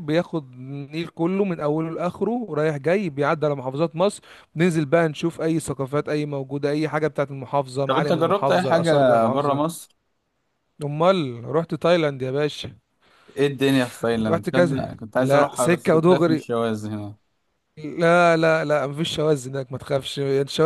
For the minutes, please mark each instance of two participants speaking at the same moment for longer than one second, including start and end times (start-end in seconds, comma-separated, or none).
7.9-9.8, 14.3-16.4